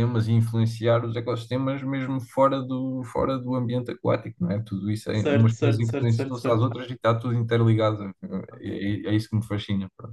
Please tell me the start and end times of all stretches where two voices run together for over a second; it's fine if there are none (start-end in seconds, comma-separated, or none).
5.1-6.7